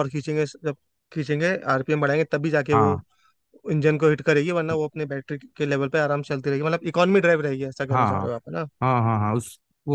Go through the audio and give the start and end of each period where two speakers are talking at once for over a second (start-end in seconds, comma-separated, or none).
none